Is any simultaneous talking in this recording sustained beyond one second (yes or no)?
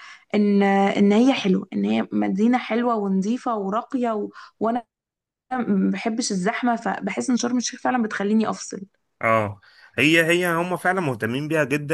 no